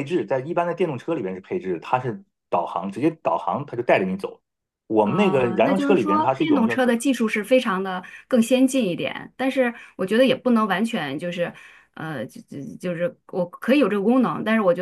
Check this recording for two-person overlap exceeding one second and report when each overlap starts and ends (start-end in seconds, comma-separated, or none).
5.0-6.8